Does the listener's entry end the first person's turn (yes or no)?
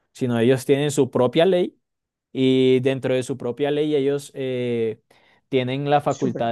no